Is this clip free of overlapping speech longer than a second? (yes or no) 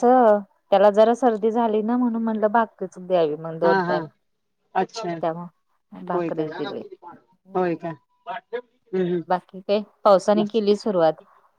yes